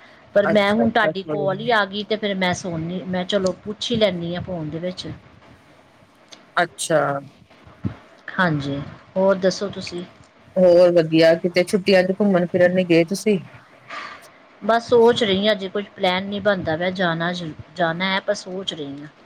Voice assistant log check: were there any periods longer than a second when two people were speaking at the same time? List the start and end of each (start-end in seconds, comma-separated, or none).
0.5-1.8